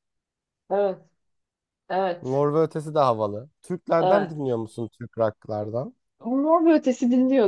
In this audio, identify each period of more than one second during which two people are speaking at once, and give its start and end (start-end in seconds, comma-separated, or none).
none